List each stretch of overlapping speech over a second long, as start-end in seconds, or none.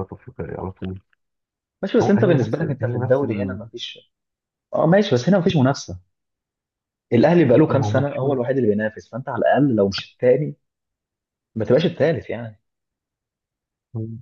2.0-3.6